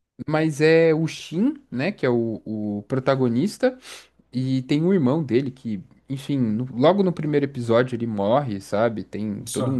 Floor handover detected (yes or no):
no